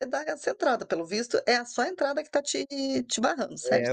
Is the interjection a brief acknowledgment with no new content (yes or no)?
no